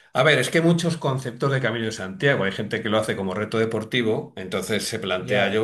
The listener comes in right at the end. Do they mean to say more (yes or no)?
no